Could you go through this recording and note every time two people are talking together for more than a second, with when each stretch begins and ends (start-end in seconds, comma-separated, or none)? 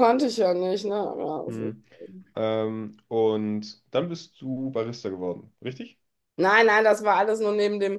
none